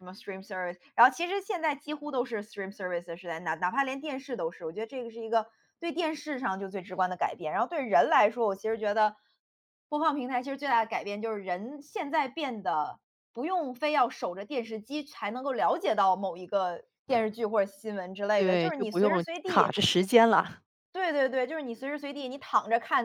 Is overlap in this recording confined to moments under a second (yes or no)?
no